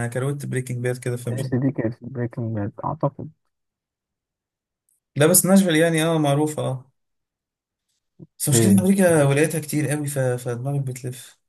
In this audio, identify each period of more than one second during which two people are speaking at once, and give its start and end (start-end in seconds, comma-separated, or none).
none